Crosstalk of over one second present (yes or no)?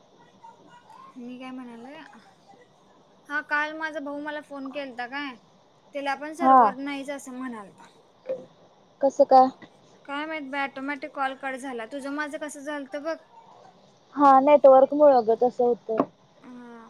no